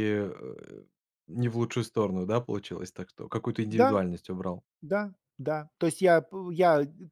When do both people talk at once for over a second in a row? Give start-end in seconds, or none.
none